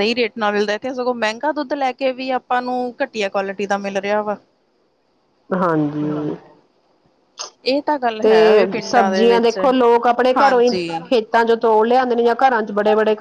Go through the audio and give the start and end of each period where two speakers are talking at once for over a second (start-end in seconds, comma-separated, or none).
none